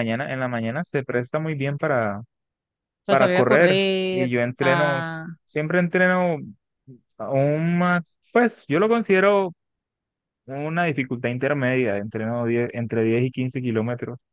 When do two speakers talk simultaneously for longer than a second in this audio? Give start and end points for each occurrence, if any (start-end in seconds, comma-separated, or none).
3.1-5.0